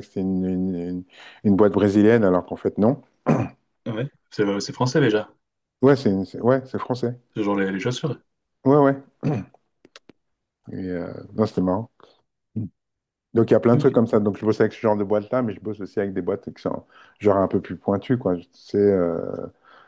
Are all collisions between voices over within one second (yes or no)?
yes